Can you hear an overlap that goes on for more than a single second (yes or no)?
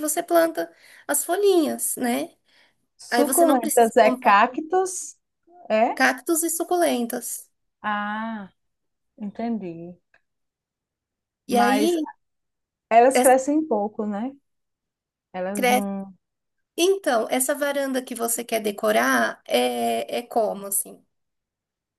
yes